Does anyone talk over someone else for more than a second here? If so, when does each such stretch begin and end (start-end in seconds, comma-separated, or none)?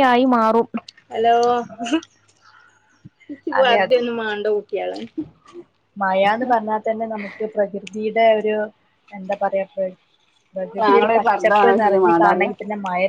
10.9-12.5